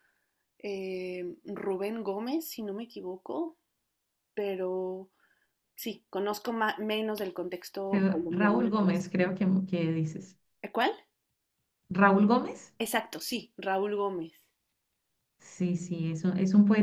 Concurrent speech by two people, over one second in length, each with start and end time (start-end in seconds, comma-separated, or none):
7.9-9.3